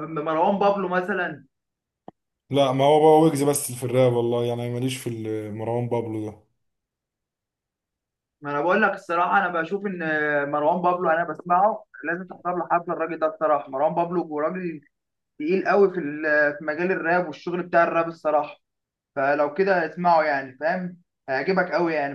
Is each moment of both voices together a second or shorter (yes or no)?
yes